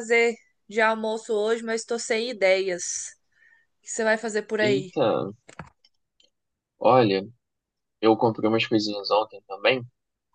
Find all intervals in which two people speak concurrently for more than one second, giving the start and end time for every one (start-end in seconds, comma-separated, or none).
none